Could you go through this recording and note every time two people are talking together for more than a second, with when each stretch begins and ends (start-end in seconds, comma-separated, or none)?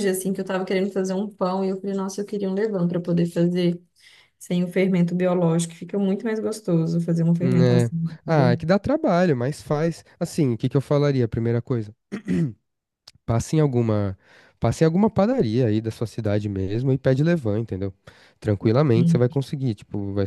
none